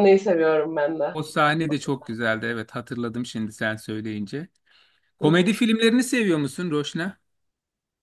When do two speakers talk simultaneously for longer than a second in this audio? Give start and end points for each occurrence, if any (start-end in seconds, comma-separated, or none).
none